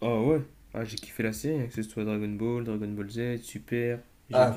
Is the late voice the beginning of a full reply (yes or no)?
yes